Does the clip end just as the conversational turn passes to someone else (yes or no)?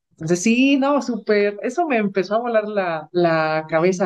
no